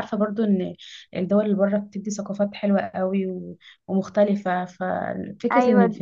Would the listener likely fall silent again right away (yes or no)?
yes